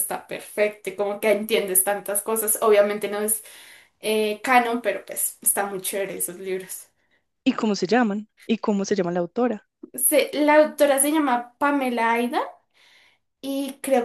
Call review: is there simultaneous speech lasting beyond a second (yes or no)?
no